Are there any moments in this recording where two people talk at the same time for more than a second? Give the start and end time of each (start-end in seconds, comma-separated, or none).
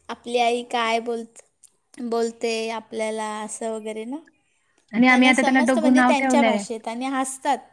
5.1-6.5